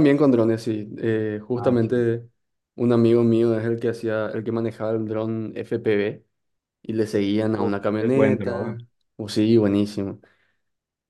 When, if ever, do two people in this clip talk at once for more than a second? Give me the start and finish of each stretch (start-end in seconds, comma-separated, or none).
7.4-8.8